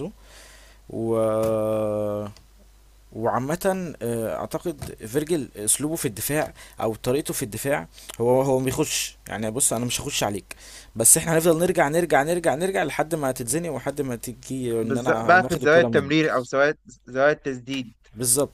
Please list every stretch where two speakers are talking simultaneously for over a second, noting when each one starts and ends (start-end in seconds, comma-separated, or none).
14.8-16.3